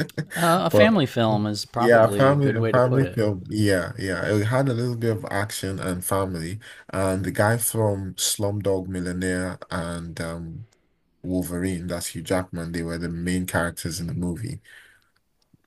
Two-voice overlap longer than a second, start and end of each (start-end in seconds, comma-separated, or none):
1.8-3.2